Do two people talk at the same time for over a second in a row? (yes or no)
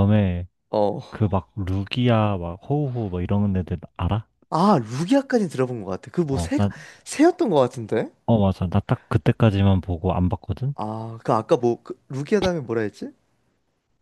no